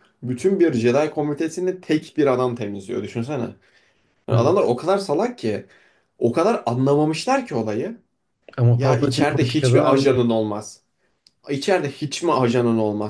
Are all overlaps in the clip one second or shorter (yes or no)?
no